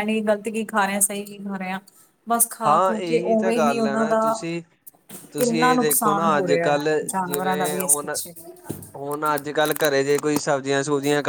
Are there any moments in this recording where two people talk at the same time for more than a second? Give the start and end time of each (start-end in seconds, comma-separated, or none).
2.6-4.2, 5.4-8.2